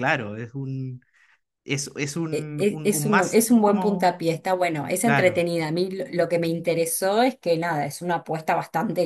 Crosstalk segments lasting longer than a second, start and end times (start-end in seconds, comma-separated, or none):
2.3-4.2